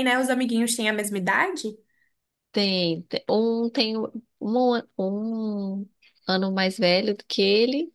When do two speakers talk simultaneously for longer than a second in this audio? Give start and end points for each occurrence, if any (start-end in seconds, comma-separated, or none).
none